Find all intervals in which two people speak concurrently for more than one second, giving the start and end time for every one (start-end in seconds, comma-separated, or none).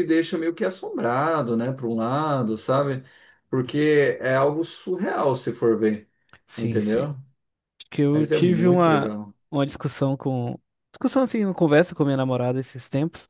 8.1-9.3